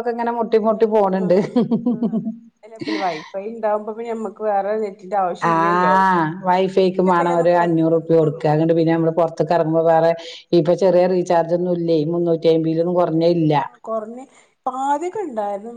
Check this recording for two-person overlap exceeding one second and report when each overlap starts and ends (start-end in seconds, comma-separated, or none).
6.6-8.5